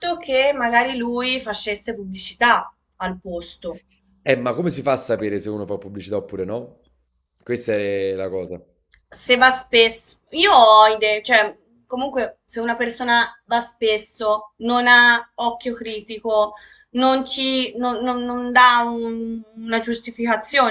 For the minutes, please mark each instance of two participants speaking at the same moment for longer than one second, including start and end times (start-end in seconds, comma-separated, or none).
none